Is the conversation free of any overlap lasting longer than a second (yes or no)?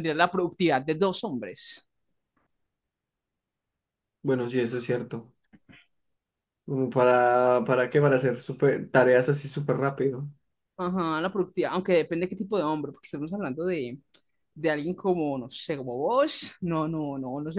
yes